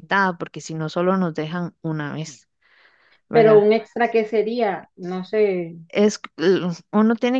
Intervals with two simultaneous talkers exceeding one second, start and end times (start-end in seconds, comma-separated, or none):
none